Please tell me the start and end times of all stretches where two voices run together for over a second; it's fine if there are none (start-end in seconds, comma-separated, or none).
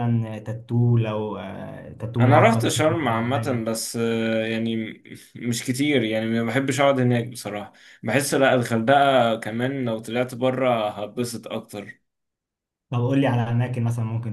2.2-3.7